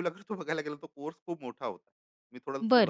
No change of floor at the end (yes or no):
no